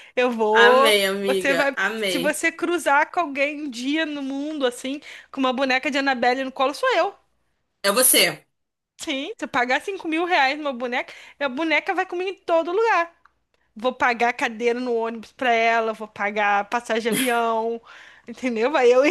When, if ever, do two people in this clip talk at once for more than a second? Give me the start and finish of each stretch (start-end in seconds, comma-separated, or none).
0.5-2.4